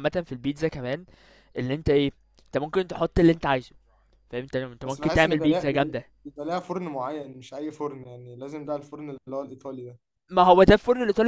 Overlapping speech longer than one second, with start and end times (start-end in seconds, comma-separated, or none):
4.8-6.0